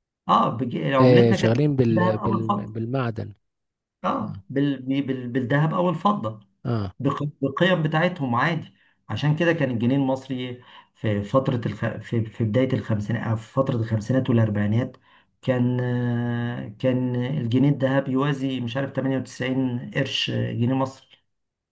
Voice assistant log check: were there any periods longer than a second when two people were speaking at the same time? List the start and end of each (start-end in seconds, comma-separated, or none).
1.0-2.8